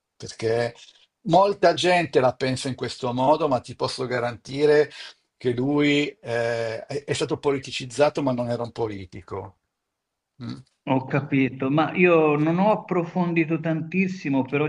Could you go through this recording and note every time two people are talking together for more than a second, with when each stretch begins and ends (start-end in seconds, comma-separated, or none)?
none